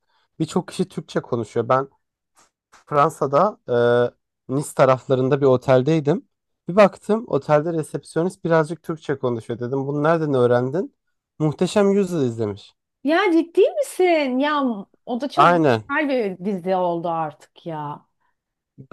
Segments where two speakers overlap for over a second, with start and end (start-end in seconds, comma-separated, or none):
none